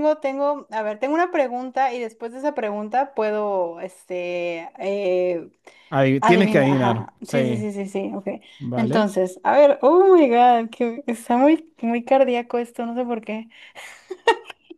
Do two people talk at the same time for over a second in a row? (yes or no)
yes